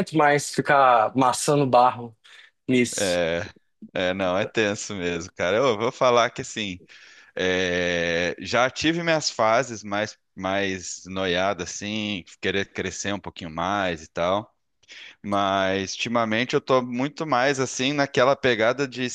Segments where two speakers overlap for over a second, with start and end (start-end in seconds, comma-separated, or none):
none